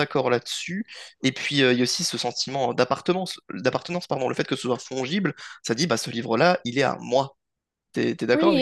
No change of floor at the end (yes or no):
no